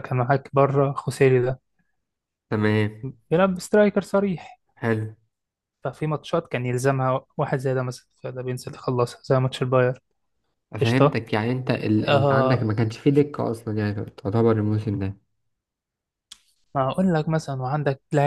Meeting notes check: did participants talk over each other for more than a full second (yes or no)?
no